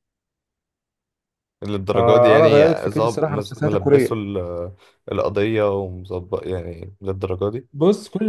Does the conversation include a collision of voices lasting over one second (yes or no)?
yes